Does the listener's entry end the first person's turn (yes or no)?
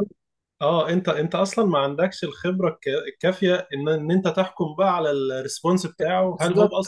yes